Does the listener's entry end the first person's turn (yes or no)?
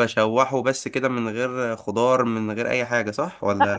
yes